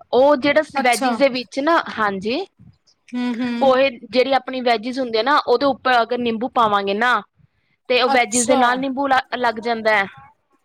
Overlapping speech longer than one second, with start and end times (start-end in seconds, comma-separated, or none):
none